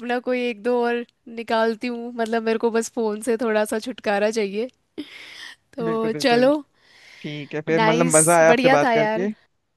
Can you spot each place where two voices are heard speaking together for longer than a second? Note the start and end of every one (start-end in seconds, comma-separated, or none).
7.8-9.2